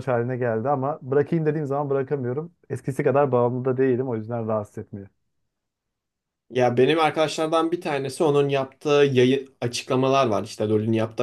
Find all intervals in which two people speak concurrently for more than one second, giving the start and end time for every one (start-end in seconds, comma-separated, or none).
none